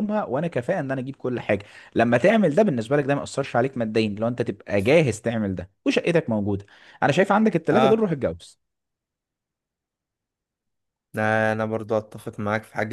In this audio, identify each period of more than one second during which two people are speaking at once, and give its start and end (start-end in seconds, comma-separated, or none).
none